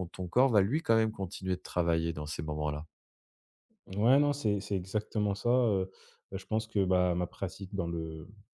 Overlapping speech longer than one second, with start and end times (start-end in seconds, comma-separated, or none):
none